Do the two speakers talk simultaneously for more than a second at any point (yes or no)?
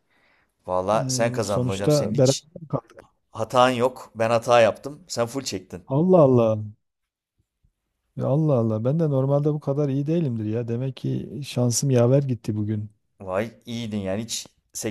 yes